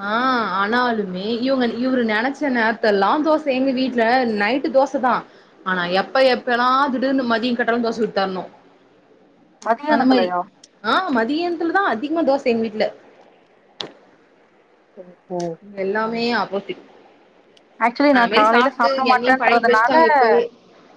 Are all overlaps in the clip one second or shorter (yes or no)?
no